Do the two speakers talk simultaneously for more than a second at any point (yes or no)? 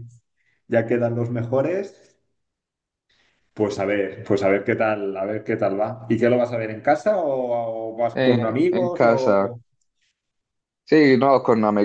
yes